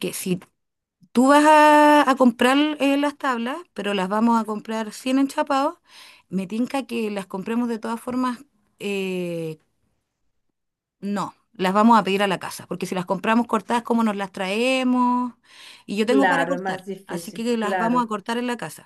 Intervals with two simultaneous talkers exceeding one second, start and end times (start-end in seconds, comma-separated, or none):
16.1-18.1